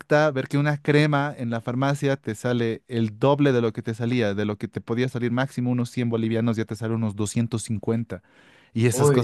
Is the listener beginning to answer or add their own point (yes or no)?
no